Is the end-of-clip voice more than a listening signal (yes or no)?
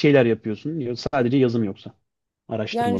yes